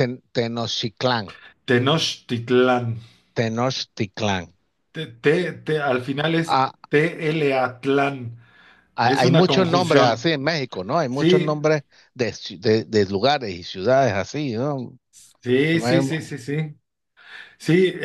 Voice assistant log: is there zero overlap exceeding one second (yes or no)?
no